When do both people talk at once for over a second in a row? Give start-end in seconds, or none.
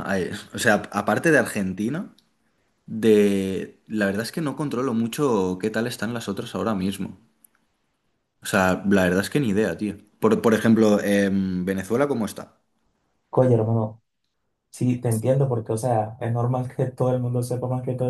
none